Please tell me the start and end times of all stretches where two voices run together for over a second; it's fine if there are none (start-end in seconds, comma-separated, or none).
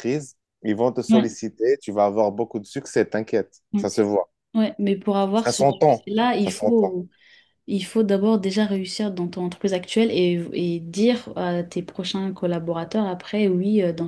5.3-7.0